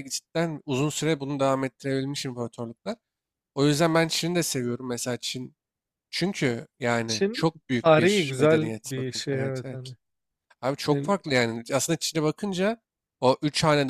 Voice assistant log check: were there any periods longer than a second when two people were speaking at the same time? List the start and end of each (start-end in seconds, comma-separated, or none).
7.1-9.9